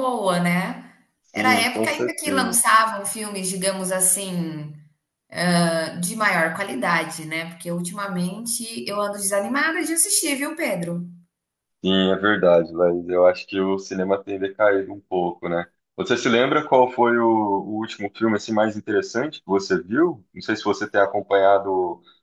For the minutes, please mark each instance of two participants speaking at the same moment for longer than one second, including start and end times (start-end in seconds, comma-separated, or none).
1.3-2.6